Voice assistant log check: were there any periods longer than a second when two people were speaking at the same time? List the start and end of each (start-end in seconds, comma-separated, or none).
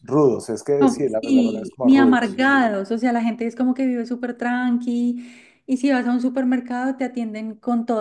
0.8-2.4